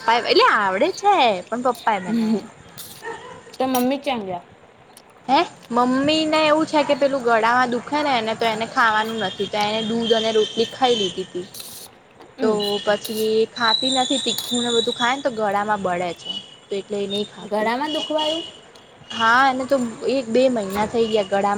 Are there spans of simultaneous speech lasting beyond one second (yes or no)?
no